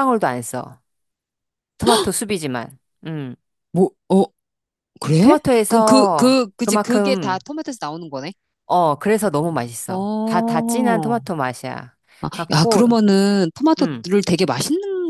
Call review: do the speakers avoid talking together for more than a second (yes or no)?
no